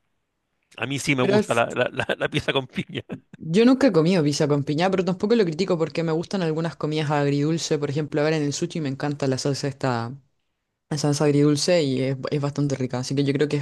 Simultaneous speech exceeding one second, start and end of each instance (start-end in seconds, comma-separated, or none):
none